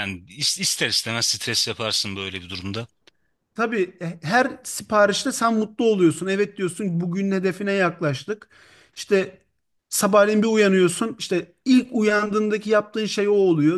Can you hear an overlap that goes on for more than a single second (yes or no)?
no